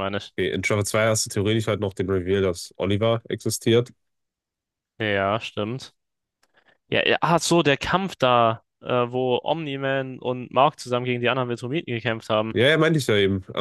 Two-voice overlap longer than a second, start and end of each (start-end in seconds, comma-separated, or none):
none